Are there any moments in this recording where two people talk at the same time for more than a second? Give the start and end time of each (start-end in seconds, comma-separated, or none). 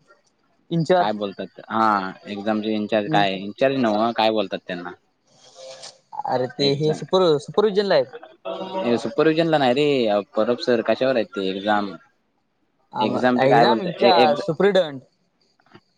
13.1-14.4